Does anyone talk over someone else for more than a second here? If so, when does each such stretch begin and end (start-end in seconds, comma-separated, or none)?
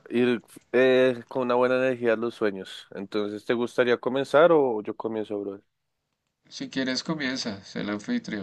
none